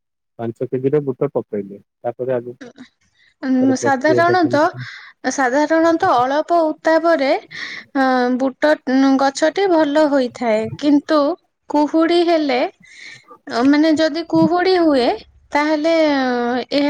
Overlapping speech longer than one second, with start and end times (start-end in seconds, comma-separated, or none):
3.5-4.7